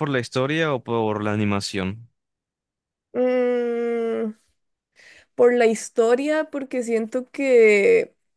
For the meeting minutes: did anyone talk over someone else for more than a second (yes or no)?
no